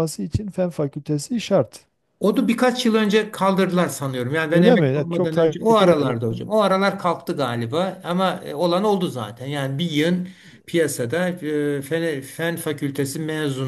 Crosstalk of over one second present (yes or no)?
yes